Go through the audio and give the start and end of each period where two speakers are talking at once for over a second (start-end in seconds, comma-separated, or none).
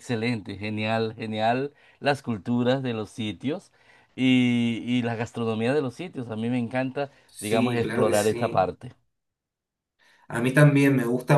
7.2-8.6